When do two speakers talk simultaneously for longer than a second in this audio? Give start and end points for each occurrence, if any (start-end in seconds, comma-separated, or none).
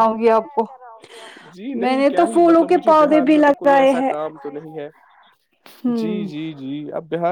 1.8-4.1